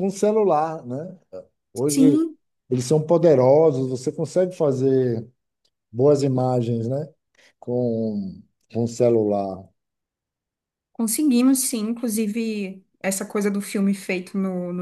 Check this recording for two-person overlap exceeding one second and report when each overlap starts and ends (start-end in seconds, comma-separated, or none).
none